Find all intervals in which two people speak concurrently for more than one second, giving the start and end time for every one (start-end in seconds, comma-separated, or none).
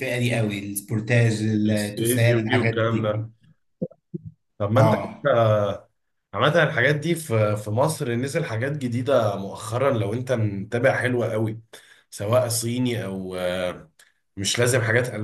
1.7-3.1